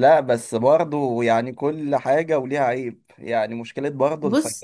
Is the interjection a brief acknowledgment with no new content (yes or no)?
yes